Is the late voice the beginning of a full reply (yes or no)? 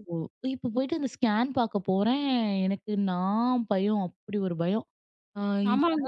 yes